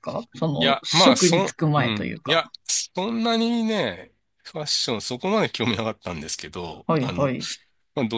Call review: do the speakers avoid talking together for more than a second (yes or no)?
no